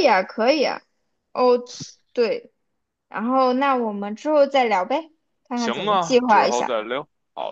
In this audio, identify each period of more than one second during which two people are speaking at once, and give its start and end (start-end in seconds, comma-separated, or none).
5.5-6.8